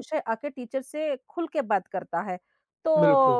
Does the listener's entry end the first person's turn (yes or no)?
no